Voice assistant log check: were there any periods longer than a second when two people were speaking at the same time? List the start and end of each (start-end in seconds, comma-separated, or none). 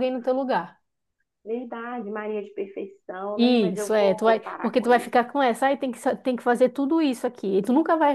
3.3-5.1